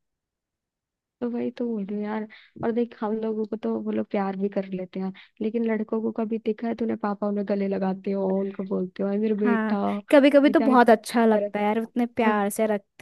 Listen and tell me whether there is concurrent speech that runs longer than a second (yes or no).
yes